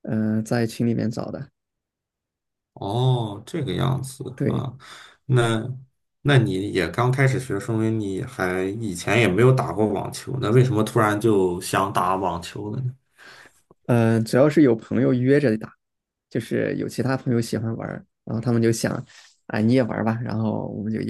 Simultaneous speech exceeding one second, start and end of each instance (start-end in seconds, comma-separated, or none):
none